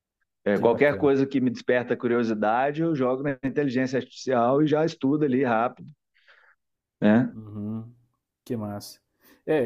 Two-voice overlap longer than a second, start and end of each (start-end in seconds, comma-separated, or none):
none